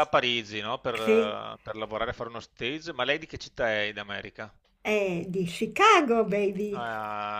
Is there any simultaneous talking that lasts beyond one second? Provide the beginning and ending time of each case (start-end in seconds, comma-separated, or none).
none